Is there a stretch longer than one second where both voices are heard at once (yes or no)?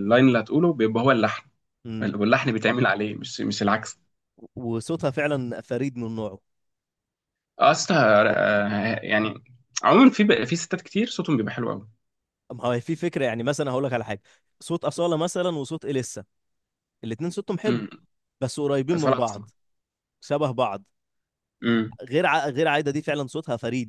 no